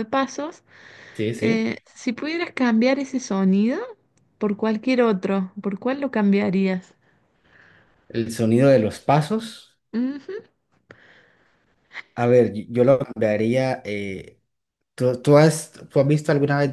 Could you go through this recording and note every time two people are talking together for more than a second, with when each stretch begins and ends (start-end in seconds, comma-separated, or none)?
none